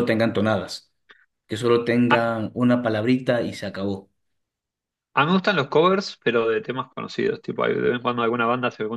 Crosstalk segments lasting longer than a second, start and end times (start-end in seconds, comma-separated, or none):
none